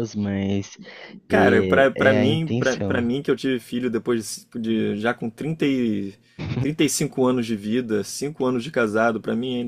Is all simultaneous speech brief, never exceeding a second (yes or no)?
no